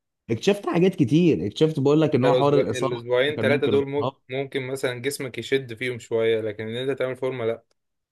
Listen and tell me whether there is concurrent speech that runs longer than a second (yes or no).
yes